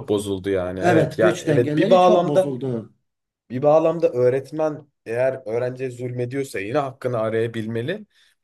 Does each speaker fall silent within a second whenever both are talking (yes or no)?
no